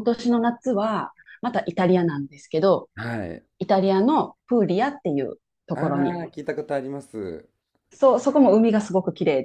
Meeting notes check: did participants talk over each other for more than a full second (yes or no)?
no